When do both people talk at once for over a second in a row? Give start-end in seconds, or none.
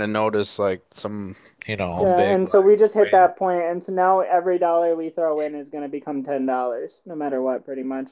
2.0-3.3